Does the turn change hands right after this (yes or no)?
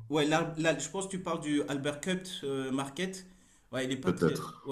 no